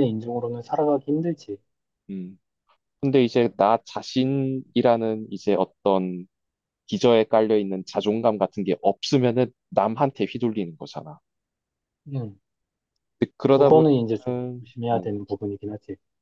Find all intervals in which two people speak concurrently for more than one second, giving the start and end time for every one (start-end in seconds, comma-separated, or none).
13.5-15.1